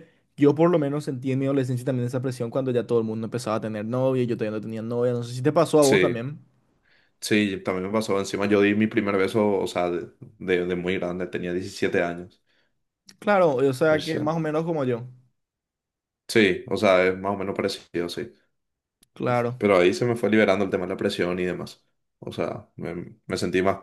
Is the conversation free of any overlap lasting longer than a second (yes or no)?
yes